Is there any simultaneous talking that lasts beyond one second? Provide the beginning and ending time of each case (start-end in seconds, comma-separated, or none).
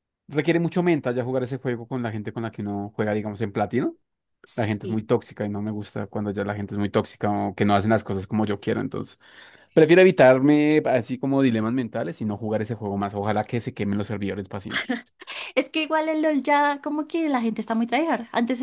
none